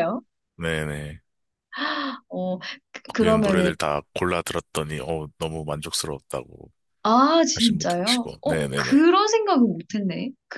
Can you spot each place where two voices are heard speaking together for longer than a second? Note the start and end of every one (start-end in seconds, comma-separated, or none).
7.5-9.1